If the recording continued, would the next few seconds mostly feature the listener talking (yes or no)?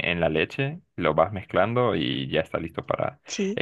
no